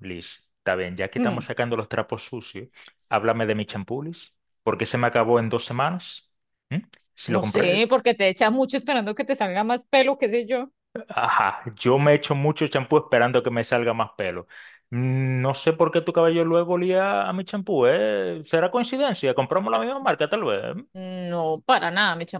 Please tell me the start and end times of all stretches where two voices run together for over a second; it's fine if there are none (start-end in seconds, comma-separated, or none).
none